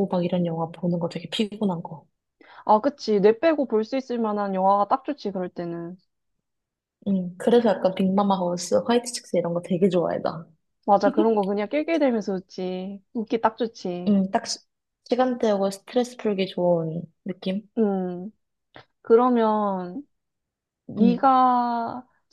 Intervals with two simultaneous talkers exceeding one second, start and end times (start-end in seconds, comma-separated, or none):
none